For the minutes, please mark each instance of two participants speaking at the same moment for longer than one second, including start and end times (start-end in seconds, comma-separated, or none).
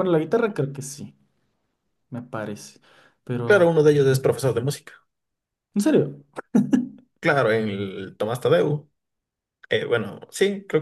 none